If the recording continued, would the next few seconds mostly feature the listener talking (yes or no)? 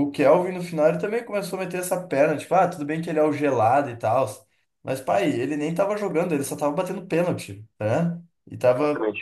no